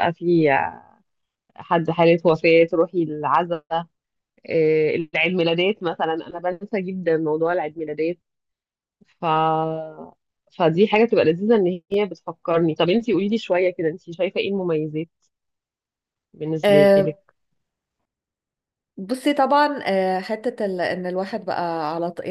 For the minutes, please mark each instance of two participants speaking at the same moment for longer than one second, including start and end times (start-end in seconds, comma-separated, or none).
none